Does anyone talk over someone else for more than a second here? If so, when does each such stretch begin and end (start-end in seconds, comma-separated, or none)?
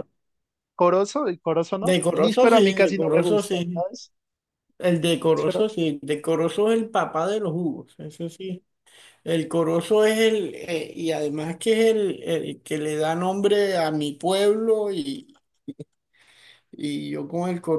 1.8-3.9